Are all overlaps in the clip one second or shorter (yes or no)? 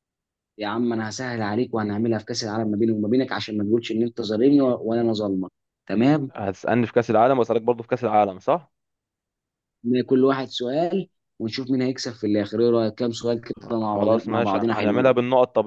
no